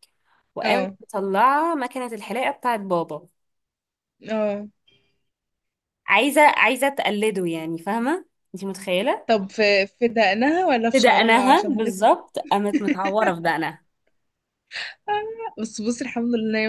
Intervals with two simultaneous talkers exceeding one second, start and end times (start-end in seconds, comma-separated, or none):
10.9-12.2